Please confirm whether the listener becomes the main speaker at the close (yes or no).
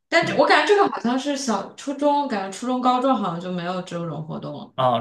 yes